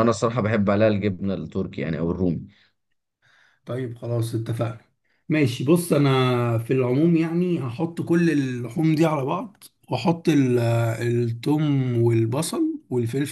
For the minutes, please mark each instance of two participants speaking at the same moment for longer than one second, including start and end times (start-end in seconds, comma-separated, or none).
none